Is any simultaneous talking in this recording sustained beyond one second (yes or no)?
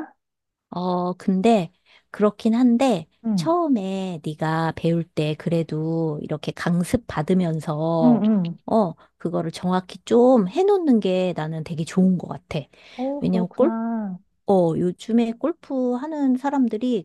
no